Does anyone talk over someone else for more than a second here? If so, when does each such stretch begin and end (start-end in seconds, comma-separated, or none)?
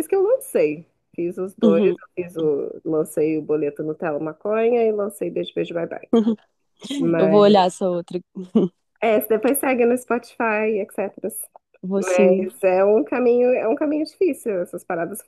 none